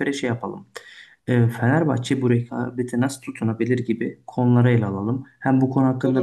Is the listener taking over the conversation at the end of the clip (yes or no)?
no